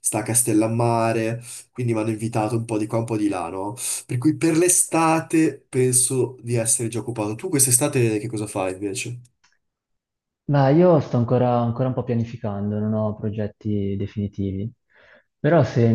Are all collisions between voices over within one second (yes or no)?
yes